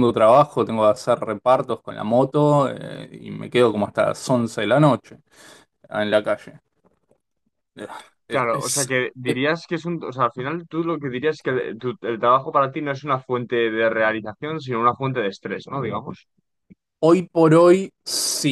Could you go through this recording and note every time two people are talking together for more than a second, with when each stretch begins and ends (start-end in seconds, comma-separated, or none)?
none